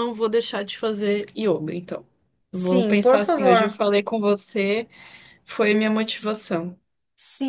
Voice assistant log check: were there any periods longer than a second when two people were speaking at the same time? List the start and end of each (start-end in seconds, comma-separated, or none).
2.5-3.8